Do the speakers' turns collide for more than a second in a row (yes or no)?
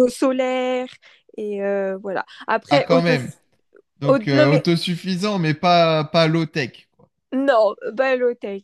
no